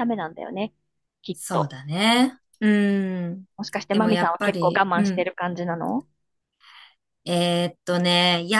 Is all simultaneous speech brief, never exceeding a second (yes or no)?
no